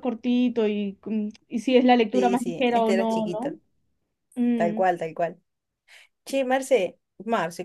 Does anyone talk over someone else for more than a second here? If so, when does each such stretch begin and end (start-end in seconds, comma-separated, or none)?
2.1-3.5